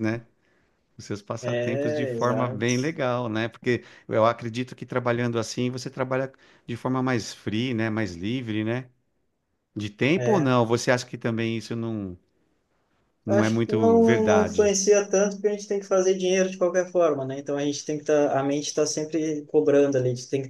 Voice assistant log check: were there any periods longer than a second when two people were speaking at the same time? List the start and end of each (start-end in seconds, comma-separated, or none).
1.4-2.6, 13.3-14.7